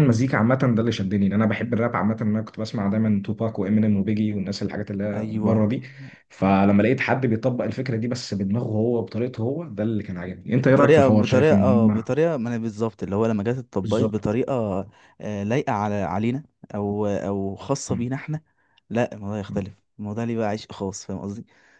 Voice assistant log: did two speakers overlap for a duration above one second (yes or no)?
yes